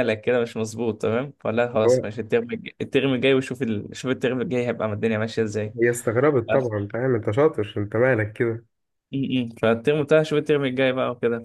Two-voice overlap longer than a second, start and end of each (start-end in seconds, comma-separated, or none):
none